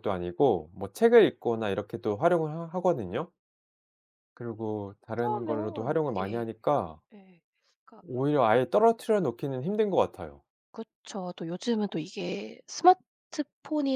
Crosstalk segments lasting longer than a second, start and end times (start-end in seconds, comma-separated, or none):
5.2-6.4